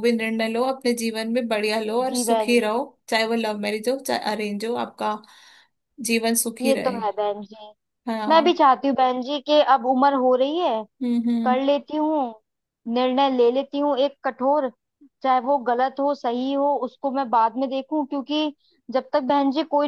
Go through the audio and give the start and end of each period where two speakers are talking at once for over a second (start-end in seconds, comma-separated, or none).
none